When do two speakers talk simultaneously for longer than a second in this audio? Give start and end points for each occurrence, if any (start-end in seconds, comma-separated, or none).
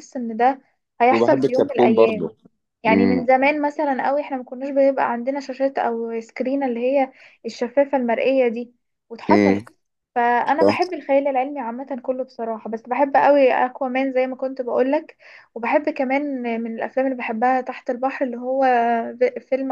1.1-2.3